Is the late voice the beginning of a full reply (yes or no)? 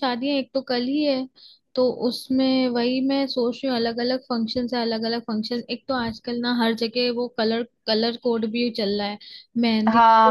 yes